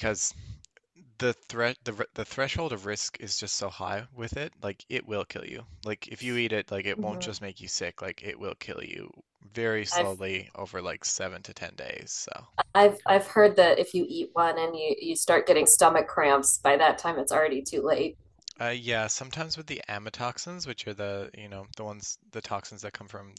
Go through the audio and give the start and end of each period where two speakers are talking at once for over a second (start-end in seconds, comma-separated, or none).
none